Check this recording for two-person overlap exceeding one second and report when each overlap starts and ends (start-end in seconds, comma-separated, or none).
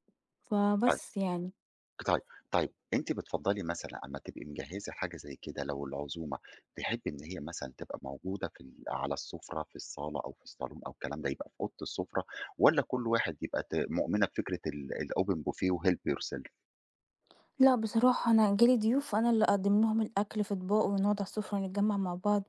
none